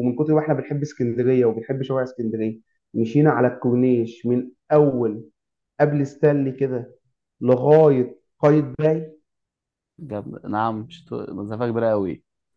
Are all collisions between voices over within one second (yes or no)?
yes